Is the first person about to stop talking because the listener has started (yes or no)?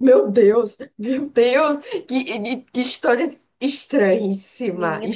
yes